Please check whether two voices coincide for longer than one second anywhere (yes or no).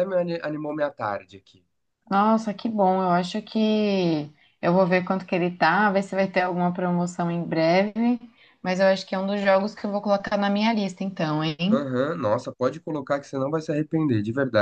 no